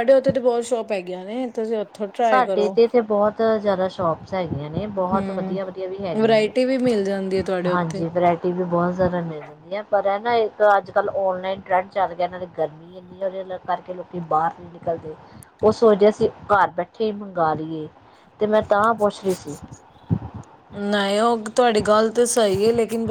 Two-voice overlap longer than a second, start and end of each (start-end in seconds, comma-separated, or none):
none